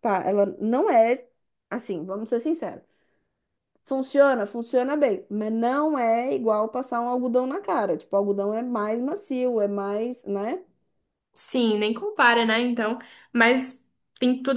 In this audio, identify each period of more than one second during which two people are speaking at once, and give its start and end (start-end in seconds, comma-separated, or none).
none